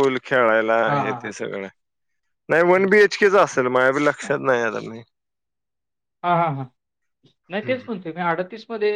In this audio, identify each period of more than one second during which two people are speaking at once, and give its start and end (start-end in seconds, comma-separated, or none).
none